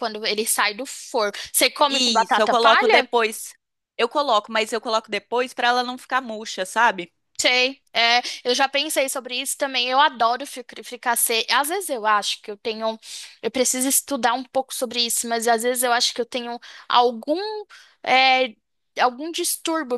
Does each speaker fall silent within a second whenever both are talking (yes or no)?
no